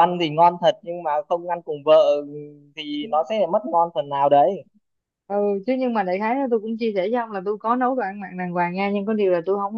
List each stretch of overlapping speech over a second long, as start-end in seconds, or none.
none